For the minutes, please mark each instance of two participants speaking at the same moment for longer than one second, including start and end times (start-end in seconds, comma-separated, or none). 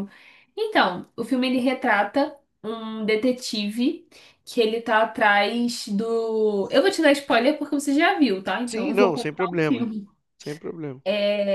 8.7-9.9